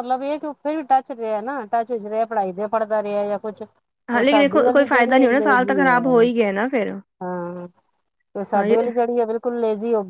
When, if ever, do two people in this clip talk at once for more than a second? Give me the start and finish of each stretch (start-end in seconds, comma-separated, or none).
4.1-6.2